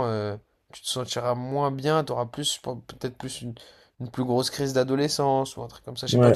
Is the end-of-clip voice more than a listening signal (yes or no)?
yes